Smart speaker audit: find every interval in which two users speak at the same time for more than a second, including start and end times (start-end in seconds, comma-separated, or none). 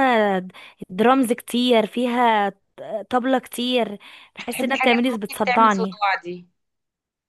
4.4-6.0